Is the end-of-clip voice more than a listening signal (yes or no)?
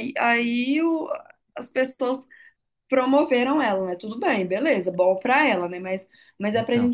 no